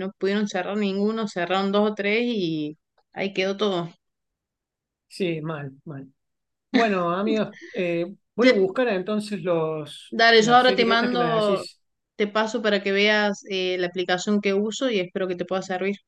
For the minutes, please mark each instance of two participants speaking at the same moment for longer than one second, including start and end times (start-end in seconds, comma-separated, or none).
10.1-11.7